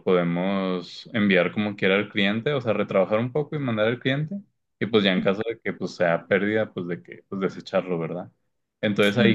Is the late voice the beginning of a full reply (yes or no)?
no